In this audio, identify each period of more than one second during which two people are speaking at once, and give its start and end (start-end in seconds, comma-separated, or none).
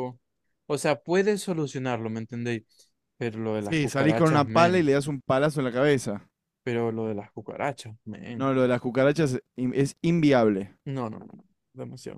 3.6-4.9